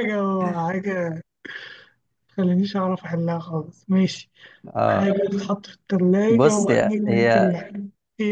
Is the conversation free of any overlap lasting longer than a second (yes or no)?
no